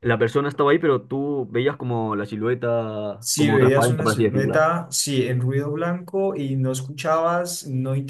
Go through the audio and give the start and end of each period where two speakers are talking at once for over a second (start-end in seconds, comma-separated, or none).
3.2-4.6